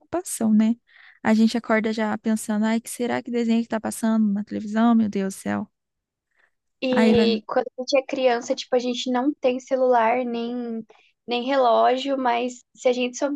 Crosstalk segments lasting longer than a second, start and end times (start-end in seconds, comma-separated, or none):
none